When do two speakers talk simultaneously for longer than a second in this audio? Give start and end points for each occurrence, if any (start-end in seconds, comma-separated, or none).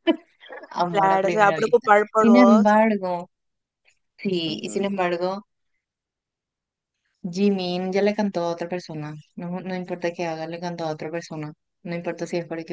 0.9-2.8